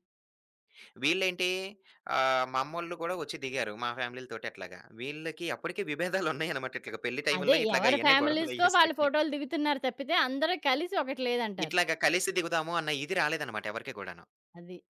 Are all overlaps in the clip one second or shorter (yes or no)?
no